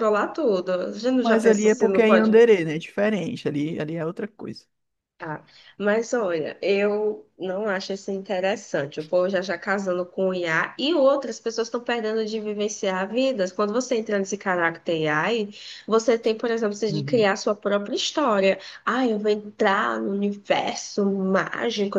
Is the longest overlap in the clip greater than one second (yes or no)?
yes